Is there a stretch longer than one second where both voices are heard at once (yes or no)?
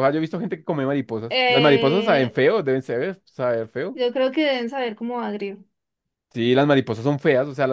yes